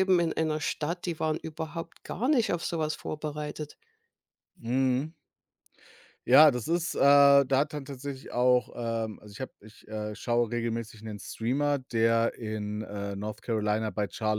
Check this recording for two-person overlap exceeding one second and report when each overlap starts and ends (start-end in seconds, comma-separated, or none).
none